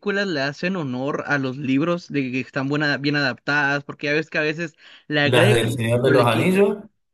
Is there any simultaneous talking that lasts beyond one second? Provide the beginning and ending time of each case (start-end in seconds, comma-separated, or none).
5.2-6.6